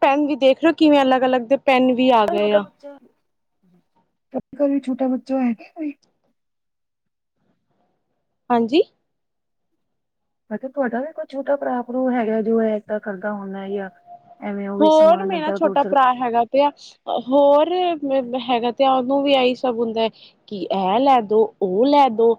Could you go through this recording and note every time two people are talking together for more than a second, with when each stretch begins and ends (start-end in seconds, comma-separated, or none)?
none